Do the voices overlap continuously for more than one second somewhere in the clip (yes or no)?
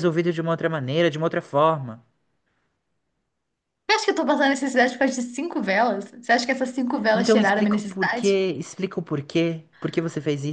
yes